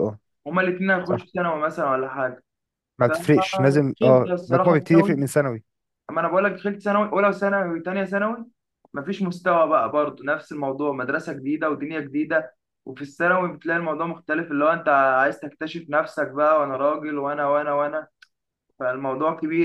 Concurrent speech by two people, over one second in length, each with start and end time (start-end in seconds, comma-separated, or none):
3.1-5.1